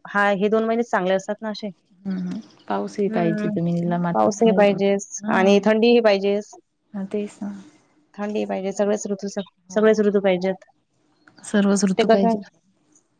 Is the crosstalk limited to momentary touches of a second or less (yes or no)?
yes